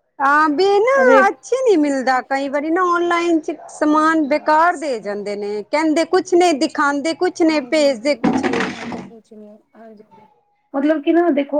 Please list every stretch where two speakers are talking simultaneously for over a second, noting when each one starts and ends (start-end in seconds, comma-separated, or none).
3.8-5.6